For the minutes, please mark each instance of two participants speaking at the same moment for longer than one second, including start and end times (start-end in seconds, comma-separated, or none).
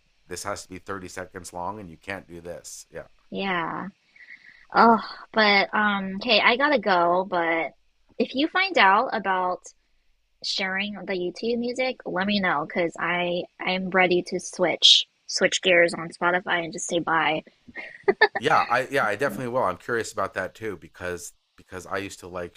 none